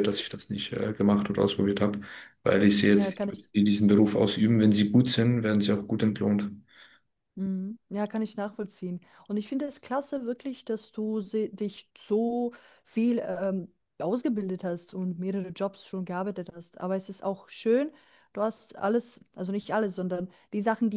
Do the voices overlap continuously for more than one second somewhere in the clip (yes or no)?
no